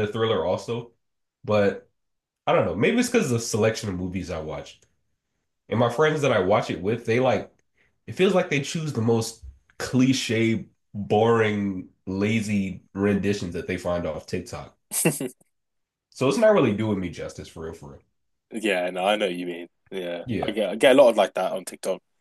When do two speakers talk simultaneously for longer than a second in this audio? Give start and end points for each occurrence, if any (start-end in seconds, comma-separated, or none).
none